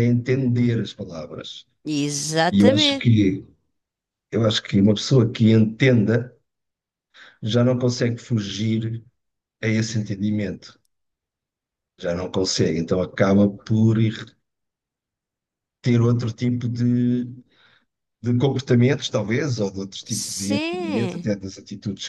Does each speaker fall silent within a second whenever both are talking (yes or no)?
no